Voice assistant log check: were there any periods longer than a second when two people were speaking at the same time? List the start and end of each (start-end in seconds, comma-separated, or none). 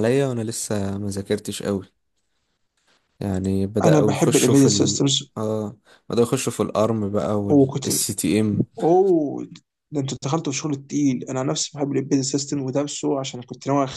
3.8-5.3